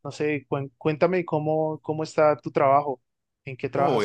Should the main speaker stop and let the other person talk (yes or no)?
yes